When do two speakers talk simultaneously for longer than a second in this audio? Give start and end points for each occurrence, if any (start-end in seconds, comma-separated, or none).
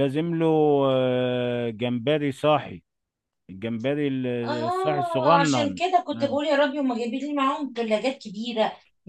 4.5-5.8